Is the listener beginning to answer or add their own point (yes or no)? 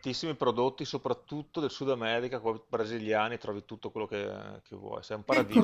yes